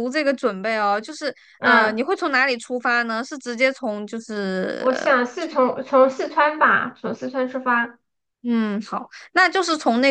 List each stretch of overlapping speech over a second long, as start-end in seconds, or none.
none